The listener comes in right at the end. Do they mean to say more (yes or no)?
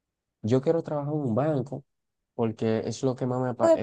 yes